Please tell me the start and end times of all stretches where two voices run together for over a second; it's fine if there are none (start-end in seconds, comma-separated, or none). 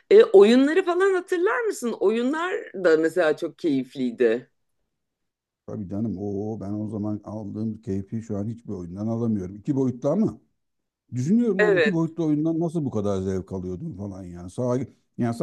none